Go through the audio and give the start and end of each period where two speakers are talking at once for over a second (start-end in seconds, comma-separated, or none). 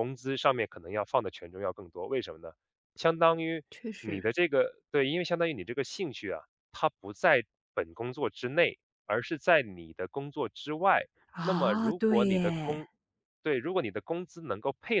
11.4-12.8